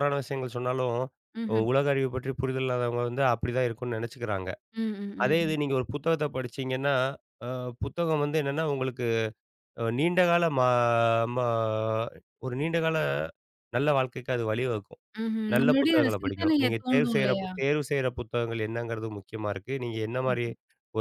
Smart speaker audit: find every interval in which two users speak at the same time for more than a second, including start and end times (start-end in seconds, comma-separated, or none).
15.5-17.5